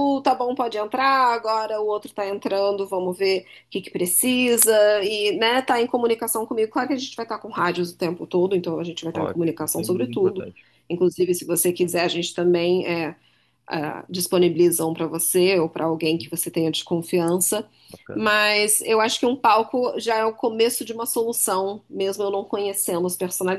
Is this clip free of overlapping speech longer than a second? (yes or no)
no